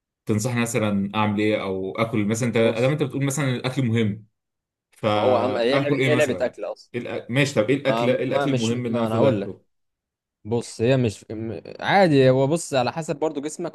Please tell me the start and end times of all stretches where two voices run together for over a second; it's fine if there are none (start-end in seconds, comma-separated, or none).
5.2-6.5, 7.9-9.6